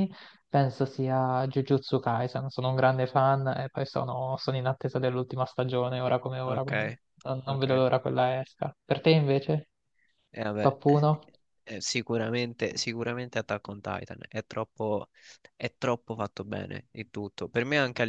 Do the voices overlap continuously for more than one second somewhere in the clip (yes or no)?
no